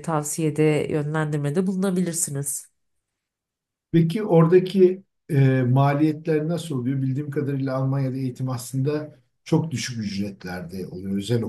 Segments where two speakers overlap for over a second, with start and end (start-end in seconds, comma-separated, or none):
none